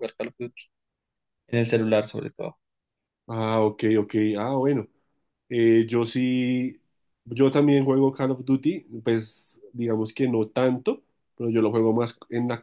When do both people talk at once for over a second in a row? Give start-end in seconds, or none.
none